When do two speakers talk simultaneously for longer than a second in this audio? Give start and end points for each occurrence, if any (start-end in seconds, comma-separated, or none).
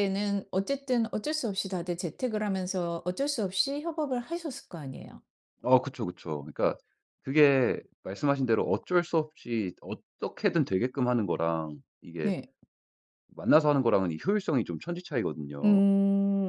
none